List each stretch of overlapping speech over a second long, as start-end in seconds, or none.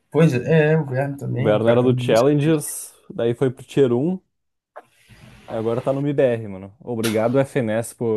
1.3-2.5